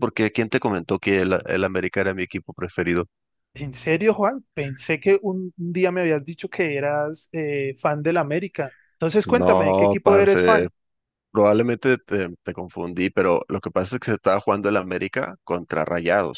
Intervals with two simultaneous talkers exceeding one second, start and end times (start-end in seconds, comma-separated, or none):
9.2-10.7